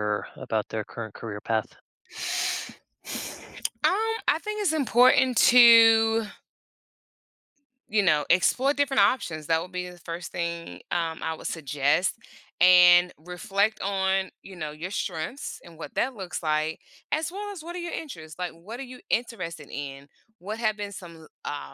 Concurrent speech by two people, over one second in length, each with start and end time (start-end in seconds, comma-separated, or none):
none